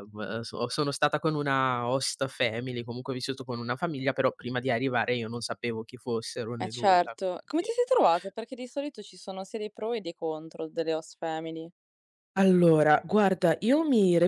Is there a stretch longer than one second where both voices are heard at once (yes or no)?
yes